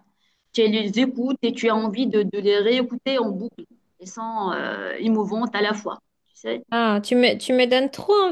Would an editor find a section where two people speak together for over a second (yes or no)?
no